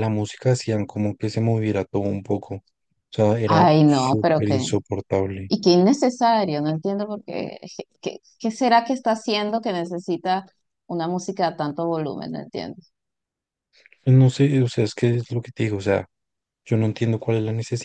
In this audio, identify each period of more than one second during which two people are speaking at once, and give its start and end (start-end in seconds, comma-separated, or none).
3.5-4.7